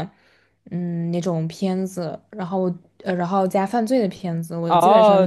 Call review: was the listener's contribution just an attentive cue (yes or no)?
no